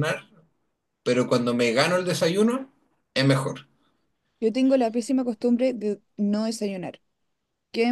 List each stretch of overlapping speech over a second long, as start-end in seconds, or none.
none